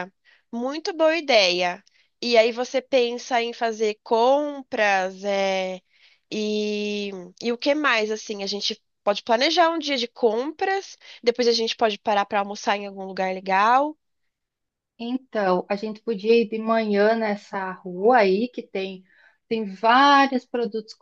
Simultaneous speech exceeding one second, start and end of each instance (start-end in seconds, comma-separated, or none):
none